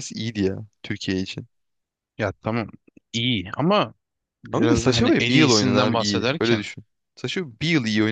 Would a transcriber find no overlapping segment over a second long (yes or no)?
no